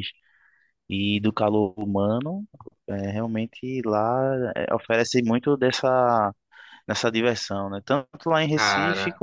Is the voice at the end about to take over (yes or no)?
no